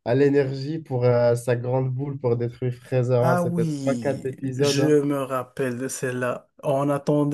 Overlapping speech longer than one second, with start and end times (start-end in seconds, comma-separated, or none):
3.2-5.0